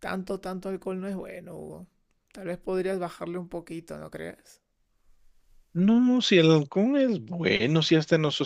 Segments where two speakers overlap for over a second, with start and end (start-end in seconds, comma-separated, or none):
none